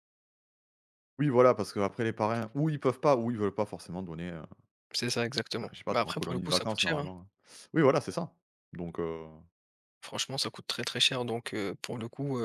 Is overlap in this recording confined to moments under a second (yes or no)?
no